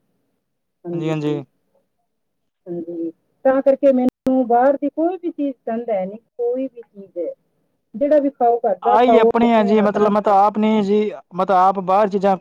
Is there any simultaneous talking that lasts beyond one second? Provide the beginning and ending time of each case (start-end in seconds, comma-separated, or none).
none